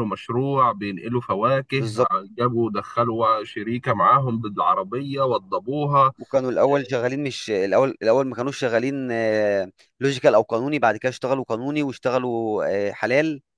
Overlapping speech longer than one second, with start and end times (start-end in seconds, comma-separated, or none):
none